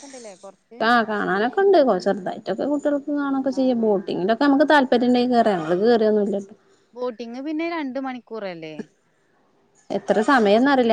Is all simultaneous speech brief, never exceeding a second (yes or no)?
yes